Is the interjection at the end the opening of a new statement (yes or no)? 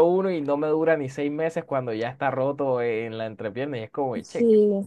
yes